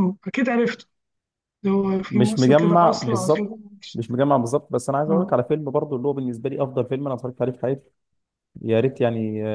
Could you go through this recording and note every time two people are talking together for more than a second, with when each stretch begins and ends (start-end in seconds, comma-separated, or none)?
2.1-3.5